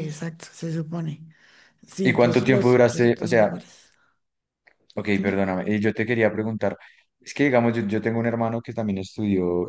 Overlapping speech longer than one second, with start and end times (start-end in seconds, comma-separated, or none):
2.0-3.5